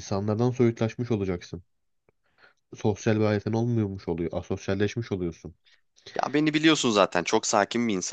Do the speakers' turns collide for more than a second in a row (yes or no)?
no